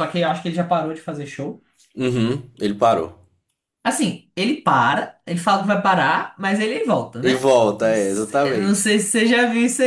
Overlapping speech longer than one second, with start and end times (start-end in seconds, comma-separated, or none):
7.2-8.9